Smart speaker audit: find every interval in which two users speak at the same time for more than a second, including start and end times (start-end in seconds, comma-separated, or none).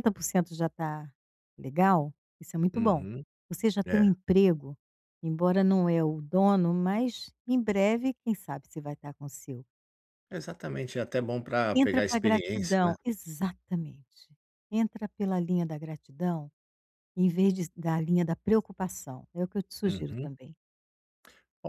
11.7-12.9